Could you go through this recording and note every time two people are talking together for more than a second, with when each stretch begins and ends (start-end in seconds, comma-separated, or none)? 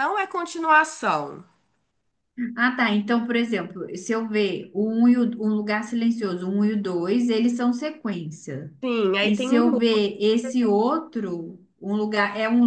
none